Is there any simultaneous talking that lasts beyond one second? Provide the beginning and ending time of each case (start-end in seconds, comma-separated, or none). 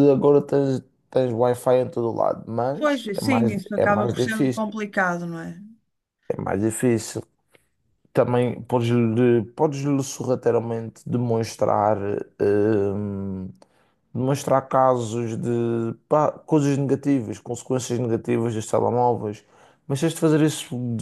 2.8-4.7